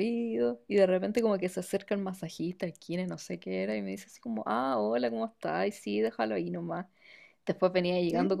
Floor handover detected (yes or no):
no